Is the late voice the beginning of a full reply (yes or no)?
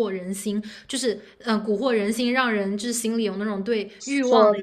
no